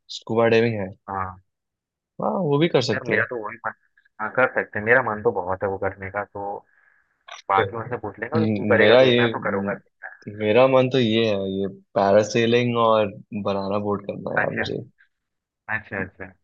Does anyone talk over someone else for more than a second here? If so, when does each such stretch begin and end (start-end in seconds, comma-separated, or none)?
7.5-9.7